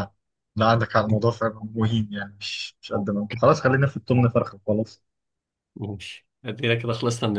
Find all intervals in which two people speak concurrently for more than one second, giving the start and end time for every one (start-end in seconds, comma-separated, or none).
none